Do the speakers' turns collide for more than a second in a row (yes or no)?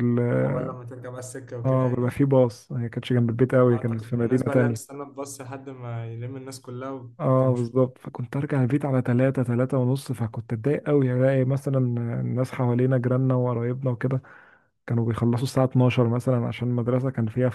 yes